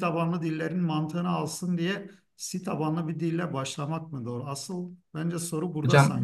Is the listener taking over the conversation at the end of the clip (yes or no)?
yes